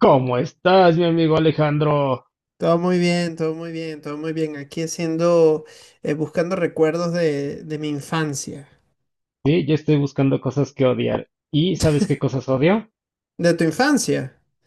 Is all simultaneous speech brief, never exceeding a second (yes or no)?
yes